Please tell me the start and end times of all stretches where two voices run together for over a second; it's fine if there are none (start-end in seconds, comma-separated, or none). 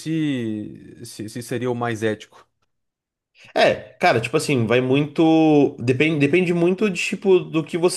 none